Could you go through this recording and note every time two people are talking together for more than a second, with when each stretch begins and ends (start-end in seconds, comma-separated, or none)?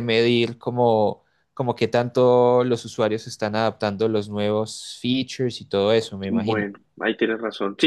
none